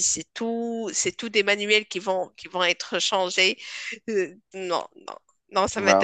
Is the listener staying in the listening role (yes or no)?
no